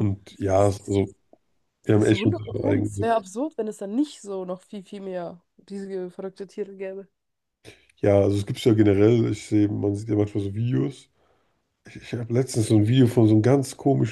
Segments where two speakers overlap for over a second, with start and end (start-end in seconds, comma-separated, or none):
1.9-3.2